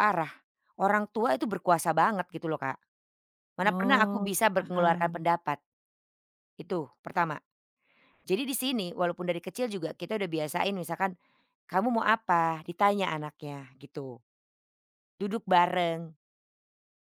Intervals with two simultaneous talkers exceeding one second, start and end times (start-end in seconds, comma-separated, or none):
3.6-5.2